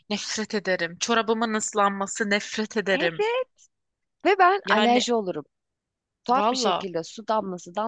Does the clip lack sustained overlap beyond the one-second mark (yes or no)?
yes